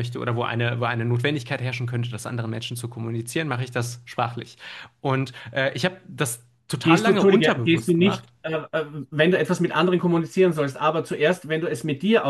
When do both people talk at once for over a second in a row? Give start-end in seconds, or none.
6.8-8.2